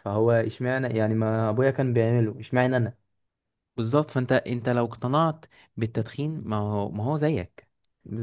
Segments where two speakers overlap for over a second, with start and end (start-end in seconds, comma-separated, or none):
none